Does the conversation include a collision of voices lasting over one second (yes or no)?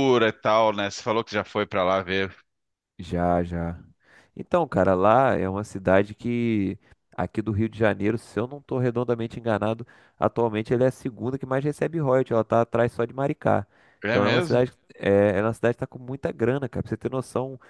no